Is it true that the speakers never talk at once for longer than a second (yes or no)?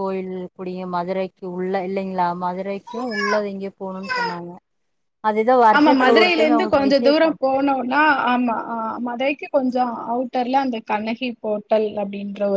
no